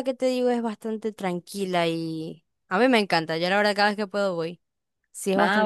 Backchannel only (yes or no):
yes